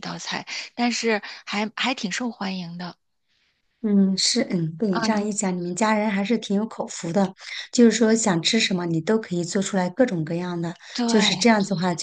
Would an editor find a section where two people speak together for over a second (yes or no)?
no